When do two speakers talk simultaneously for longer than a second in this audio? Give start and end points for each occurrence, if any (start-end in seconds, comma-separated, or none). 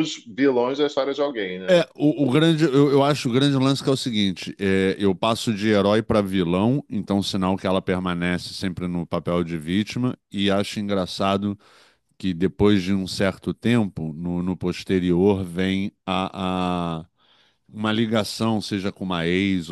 none